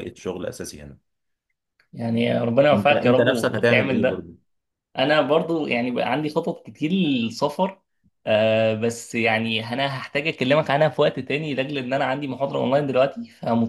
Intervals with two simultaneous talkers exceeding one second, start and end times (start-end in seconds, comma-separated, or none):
2.7-4.3